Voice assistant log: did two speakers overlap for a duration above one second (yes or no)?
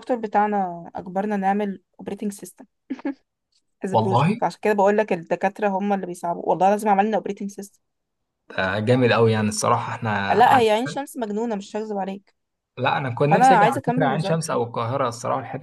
yes